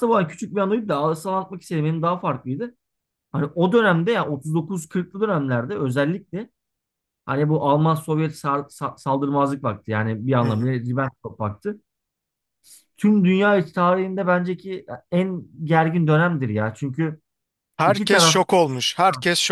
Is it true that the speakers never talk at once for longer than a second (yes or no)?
yes